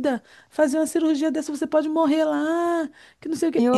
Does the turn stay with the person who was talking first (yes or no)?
yes